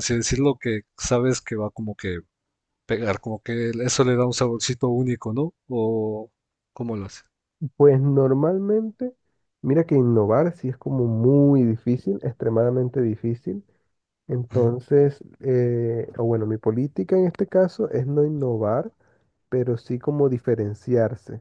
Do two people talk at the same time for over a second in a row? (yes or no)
no